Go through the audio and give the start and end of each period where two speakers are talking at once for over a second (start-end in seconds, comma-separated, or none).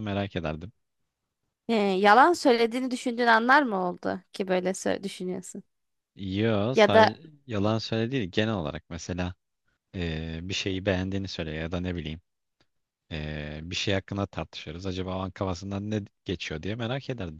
none